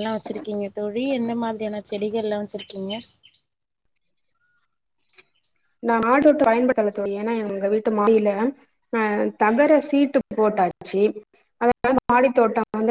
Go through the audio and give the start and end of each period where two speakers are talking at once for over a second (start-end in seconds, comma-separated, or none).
none